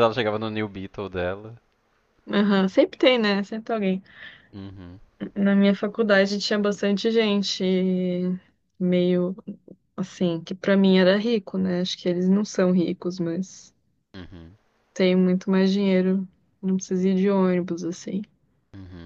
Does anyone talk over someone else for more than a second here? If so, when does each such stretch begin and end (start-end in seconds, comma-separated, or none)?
none